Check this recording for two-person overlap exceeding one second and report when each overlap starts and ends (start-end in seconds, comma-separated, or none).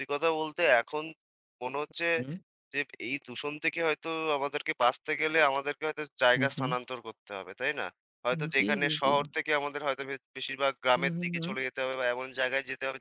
none